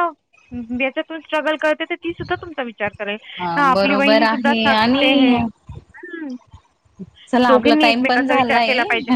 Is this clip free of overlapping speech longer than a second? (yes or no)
no